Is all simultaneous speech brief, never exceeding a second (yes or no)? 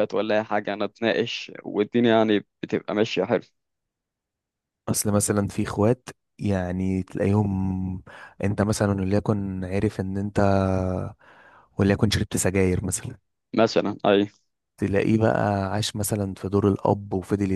yes